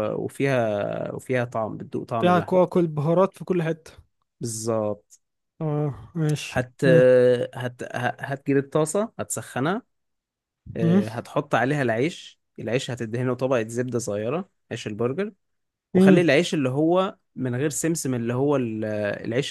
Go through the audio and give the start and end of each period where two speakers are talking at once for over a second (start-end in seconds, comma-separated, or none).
none